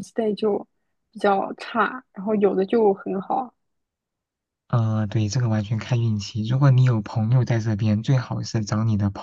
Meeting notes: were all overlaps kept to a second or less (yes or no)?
yes